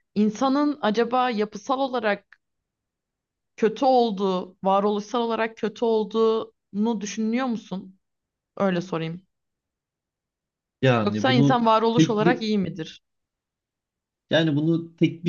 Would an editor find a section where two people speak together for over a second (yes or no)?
yes